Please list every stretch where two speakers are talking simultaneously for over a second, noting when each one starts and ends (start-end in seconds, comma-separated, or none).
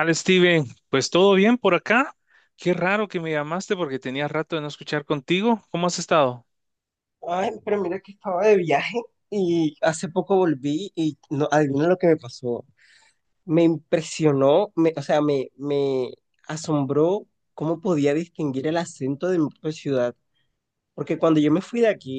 none